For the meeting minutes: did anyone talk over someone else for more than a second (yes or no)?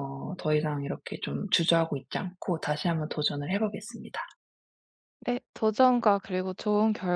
no